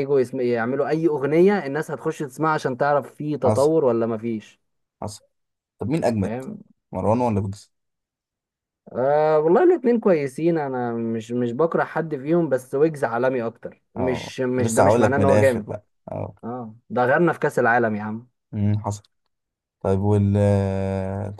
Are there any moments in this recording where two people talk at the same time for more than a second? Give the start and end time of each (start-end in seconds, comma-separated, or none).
14.0-15.7